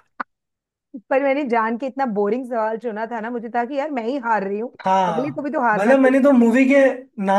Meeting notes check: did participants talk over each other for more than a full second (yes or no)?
yes